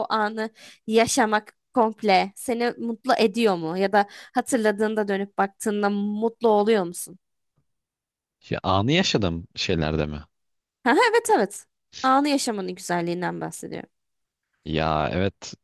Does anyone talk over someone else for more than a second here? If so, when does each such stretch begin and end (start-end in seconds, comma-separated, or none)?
none